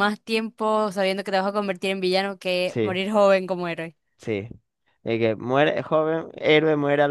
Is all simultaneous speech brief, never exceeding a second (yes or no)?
yes